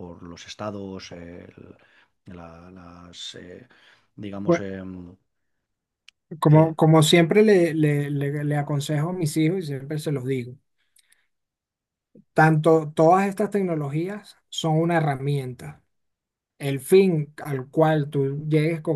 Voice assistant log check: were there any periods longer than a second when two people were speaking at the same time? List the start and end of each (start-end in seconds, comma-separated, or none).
none